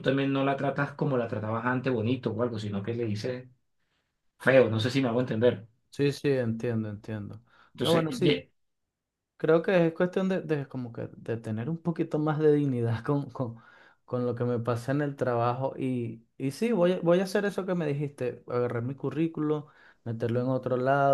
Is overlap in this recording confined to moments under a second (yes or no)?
yes